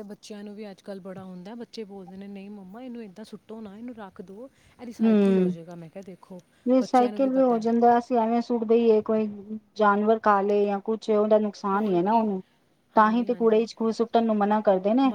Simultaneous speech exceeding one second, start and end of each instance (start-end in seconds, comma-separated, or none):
none